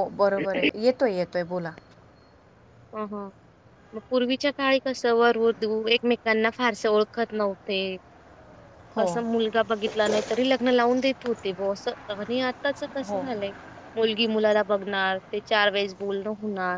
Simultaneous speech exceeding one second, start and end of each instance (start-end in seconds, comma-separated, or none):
none